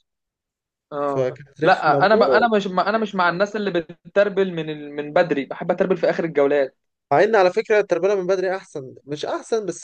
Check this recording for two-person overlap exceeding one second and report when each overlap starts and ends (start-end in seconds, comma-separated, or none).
1.0-2.5